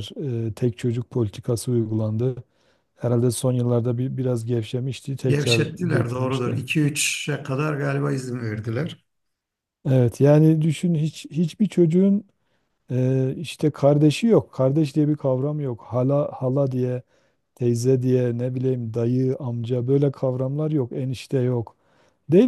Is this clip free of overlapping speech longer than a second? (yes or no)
no